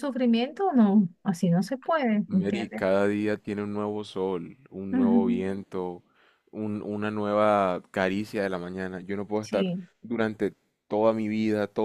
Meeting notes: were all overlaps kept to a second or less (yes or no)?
yes